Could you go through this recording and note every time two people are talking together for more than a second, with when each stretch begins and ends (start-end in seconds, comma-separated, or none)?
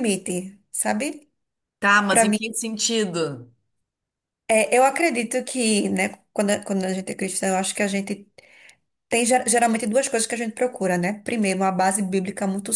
none